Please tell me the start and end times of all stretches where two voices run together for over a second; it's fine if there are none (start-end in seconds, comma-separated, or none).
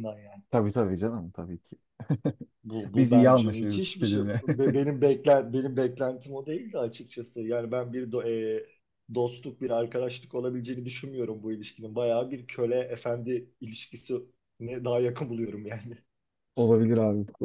2.9-4.4